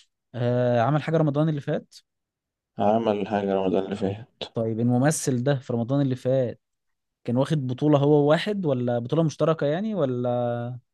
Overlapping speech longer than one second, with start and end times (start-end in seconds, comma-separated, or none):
none